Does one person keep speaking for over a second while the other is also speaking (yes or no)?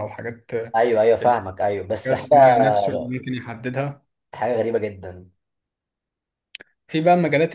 no